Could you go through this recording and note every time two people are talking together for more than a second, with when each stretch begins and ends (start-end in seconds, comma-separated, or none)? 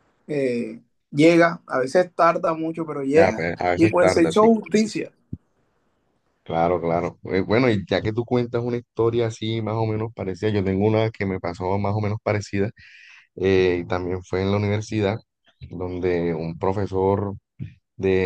3.1-4.9